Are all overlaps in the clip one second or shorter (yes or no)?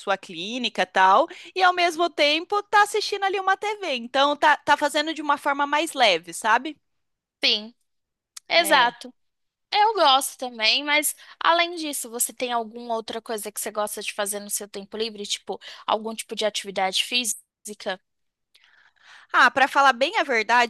yes